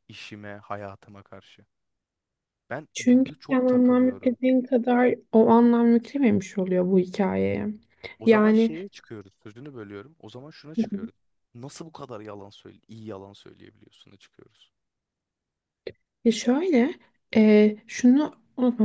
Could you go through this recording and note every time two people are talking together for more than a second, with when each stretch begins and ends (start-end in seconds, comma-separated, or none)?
2.9-4.4